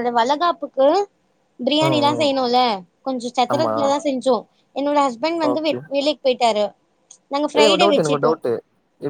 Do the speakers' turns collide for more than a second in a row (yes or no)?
no